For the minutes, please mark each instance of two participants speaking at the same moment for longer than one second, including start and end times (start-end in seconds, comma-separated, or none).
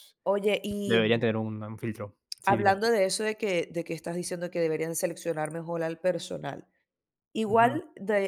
none